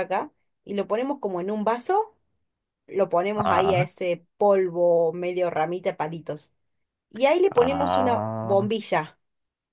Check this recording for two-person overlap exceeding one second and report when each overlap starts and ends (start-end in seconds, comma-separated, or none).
7.5-8.7